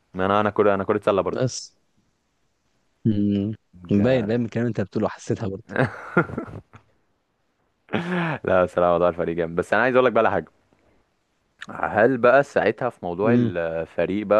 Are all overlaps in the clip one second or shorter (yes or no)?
yes